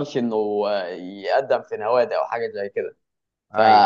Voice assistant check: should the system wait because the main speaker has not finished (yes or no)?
yes